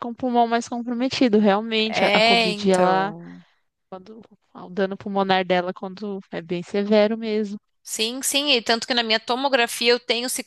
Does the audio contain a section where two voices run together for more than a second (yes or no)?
yes